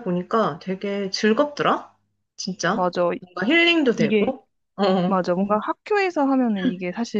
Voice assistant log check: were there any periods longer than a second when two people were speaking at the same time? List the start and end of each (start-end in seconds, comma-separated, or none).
none